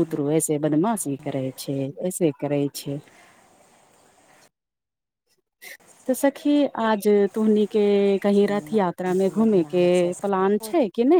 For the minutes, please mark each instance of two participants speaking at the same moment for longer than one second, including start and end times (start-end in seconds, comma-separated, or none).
8.3-9.9